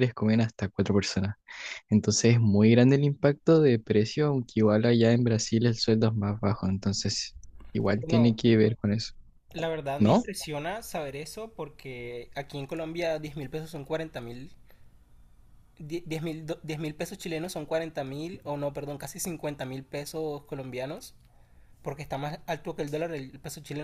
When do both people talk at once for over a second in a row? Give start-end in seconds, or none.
none